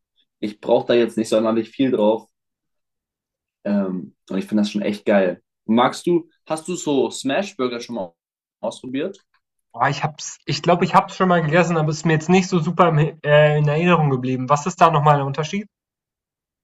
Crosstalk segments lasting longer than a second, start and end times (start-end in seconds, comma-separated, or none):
none